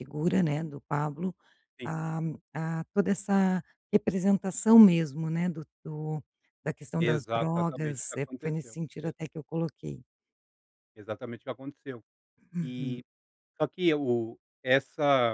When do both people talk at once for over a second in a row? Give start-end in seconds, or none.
7.0-9.1